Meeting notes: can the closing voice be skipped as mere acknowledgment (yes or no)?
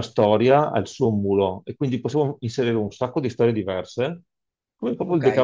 no